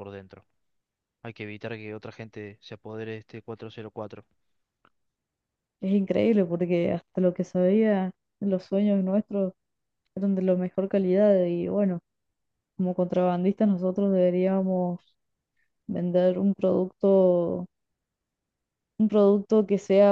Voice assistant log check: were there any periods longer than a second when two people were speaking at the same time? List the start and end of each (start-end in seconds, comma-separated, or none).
none